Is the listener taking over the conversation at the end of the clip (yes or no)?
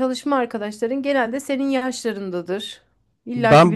yes